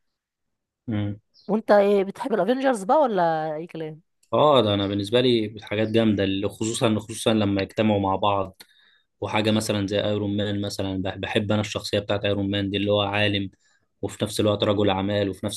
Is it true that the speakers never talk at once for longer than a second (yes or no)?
yes